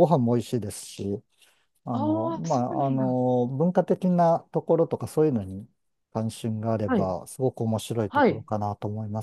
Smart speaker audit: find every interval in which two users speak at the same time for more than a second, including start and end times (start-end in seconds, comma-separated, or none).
1.9-3.2